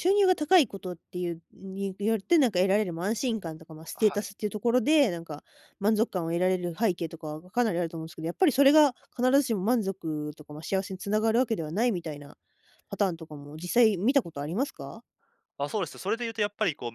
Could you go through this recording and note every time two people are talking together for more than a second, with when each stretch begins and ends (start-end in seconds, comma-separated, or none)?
none